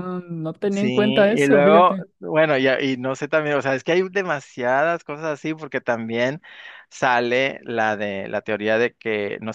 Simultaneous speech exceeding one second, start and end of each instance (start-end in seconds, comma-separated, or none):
0.7-2.0